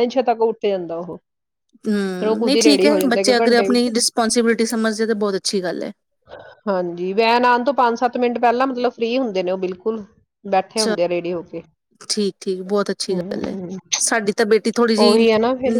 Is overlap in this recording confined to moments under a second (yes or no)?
no